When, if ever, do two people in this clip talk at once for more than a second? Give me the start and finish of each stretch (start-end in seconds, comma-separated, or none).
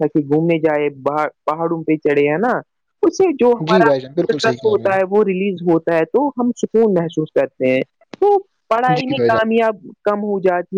3.6-4.9